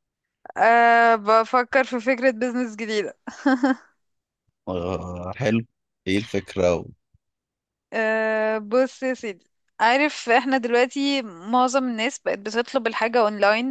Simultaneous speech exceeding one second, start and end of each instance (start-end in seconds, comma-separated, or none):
none